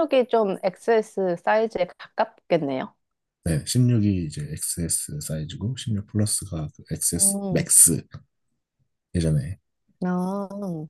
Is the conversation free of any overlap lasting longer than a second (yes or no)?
yes